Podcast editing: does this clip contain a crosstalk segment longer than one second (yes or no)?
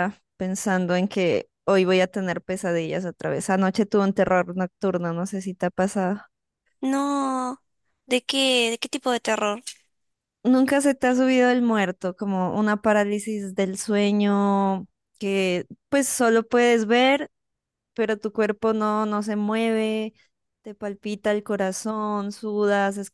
no